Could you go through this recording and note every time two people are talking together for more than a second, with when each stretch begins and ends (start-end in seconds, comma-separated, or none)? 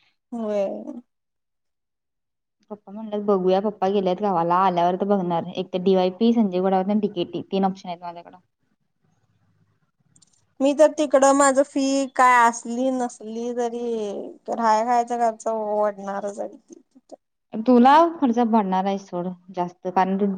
none